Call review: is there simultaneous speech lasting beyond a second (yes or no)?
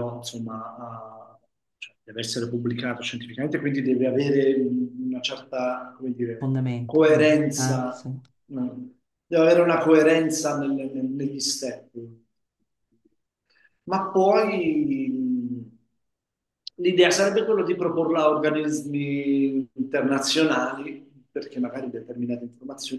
yes